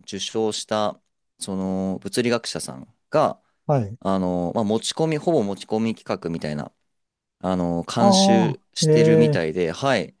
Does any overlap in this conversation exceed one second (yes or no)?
yes